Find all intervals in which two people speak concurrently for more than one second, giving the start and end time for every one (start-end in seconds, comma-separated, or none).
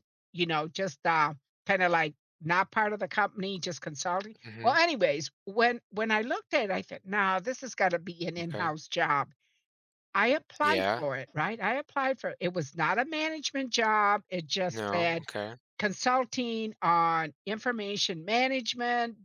none